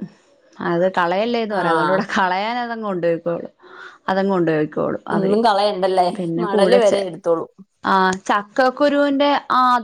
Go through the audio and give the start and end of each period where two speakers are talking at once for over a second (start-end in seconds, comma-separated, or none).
none